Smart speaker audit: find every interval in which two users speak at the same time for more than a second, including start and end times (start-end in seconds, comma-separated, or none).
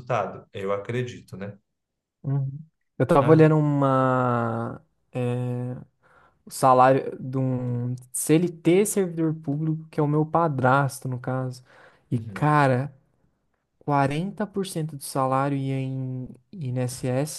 none